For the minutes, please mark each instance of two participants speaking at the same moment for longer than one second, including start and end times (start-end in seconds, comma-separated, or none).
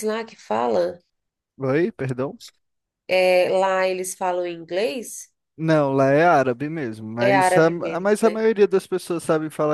7.2-8.4